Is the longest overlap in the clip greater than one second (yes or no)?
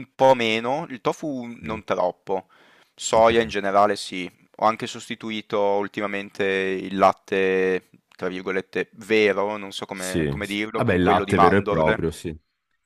yes